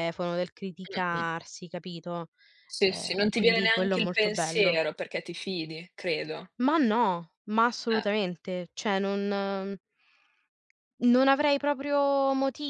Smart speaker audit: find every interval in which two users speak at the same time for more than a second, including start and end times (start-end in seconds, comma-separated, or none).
2.8-4.8